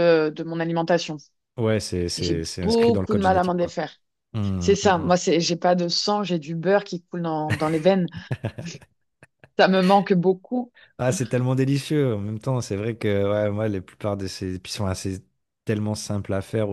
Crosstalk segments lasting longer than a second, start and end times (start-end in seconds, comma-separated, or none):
2.2-3.7